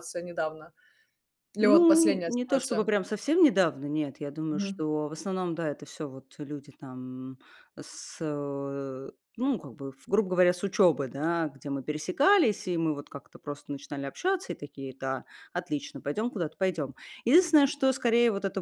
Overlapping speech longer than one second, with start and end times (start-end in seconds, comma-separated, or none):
1.6-2.9